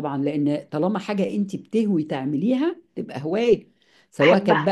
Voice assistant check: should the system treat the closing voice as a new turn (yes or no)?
no